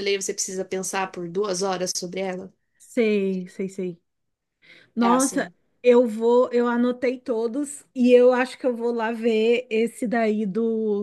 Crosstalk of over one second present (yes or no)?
no